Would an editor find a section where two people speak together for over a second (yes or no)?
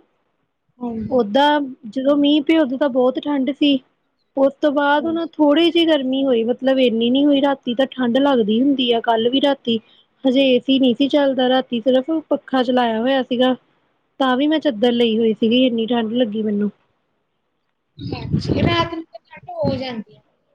no